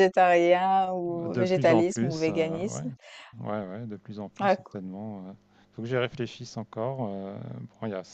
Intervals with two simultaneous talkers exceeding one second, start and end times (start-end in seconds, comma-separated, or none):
1.1-2.9